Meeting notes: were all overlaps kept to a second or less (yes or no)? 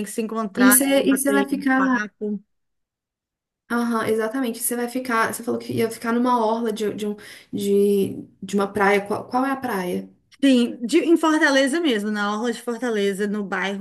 no